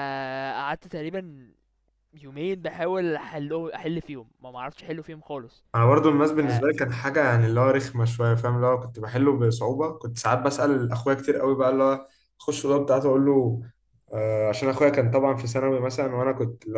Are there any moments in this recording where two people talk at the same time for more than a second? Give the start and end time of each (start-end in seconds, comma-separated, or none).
none